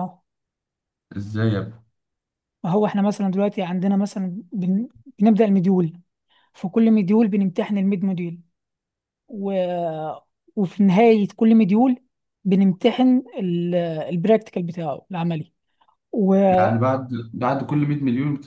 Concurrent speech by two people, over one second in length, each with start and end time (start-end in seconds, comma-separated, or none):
none